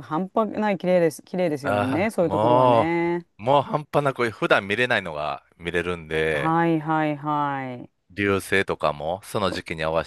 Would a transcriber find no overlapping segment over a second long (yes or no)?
no